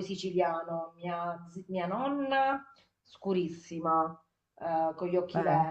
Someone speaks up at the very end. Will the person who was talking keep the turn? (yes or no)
yes